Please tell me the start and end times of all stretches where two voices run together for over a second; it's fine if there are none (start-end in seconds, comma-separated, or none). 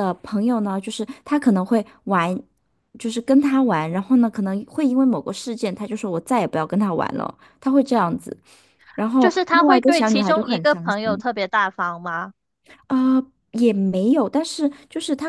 9.2-11.2